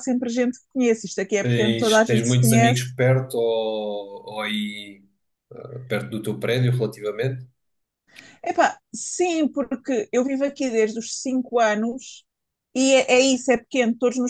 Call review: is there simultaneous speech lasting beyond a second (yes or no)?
yes